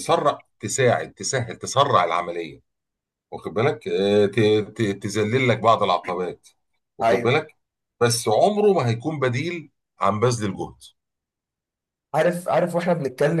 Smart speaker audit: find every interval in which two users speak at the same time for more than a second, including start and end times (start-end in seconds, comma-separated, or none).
none